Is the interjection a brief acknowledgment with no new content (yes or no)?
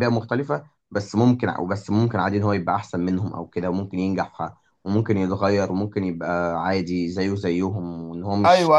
no